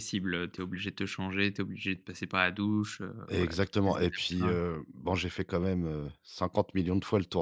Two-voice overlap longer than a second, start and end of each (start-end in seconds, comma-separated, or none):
3.3-4.6